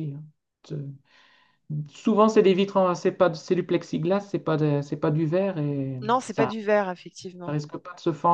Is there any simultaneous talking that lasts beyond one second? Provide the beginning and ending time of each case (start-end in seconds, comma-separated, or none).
none